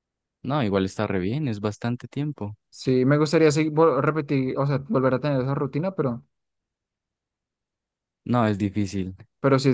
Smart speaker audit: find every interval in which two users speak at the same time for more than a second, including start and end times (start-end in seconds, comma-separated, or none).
none